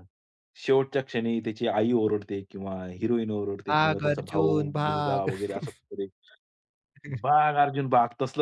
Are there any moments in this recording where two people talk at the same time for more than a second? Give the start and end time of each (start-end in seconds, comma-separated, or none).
3.7-5.3